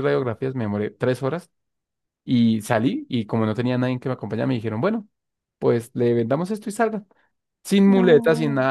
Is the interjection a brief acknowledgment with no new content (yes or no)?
yes